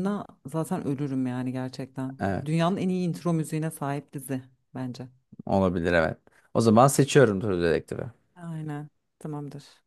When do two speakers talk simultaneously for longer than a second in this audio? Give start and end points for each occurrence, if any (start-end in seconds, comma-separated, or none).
none